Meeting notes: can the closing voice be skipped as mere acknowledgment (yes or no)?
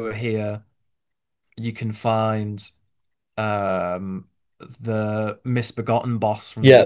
no